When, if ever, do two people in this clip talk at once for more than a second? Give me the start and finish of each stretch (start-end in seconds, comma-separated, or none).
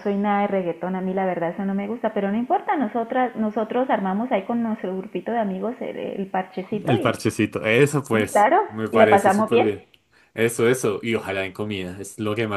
8.1-9.7